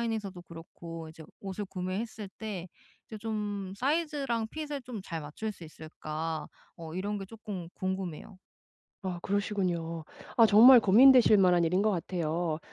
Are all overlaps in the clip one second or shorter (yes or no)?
yes